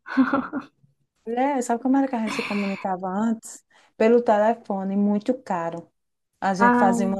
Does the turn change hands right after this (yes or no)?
no